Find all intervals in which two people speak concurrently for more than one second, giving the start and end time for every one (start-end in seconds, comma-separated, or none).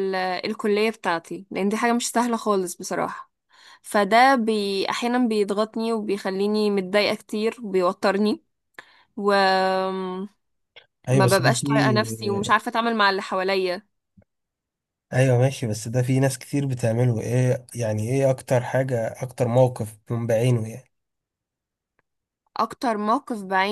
none